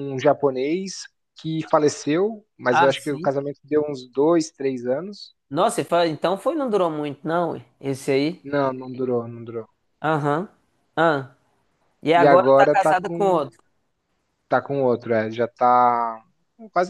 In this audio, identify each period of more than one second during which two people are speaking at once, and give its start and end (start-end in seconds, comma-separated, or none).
12.1-13.4